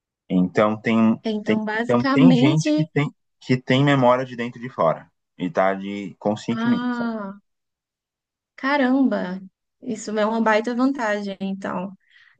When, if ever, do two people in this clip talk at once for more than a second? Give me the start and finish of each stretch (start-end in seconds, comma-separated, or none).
1.2-2.9